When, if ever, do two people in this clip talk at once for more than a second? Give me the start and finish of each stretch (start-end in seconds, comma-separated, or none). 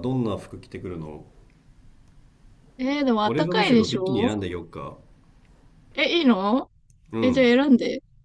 3.2-4.5